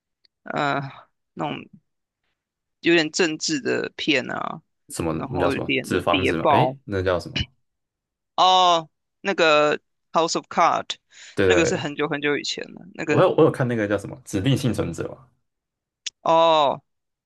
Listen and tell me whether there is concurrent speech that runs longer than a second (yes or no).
yes